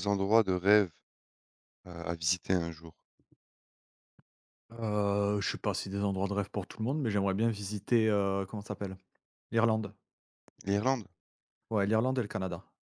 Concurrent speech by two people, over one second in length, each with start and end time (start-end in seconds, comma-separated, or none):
none